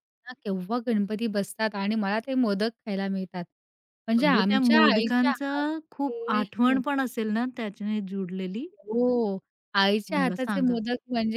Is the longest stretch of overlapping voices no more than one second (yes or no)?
no